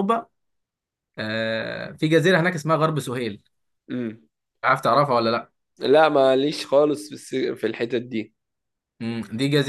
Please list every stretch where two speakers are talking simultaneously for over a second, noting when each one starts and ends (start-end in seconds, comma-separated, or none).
none